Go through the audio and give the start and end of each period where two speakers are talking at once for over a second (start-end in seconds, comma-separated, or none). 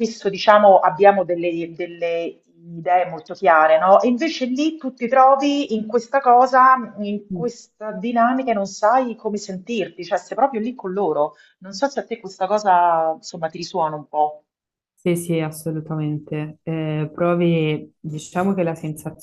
none